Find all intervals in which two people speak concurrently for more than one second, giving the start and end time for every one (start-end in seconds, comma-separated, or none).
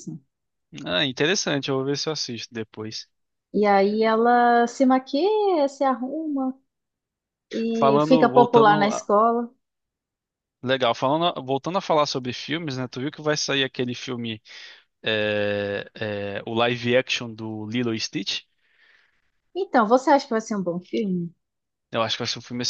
7.7-9.1